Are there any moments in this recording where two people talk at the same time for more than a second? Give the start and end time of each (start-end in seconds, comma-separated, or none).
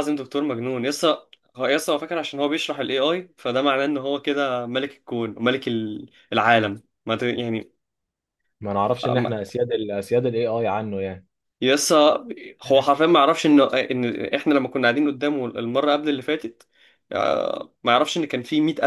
none